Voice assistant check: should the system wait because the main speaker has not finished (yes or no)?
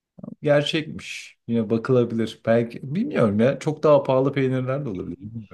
no